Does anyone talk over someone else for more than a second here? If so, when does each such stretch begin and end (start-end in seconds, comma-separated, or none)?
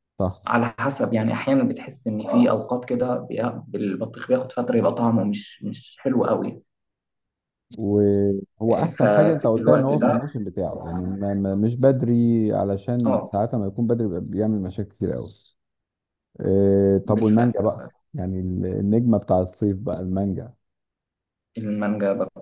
8.7-10.2